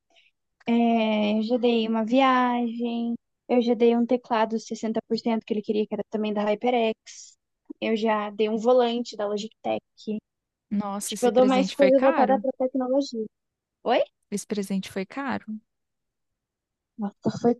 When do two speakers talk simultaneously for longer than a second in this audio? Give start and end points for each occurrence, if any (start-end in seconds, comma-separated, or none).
11.1-12.4